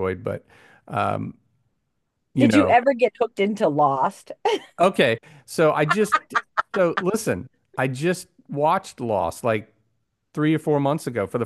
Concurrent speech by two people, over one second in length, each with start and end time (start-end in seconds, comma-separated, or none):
none